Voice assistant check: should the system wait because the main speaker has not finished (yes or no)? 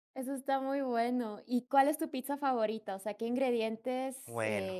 yes